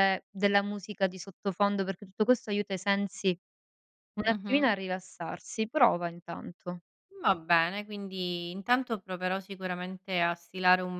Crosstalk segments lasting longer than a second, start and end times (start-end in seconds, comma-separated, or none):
none